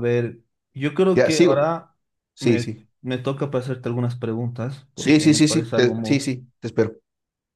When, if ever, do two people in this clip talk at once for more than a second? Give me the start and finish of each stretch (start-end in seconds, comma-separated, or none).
5.0-6.2